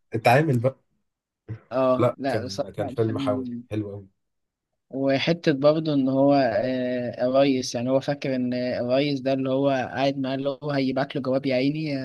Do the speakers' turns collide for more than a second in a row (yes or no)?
yes